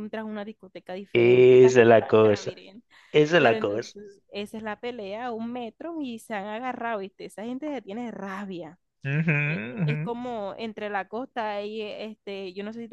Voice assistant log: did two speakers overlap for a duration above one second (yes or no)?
yes